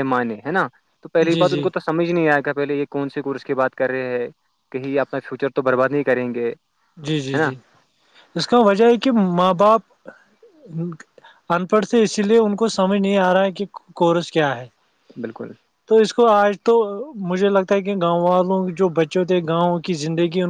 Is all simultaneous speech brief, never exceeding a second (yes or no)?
yes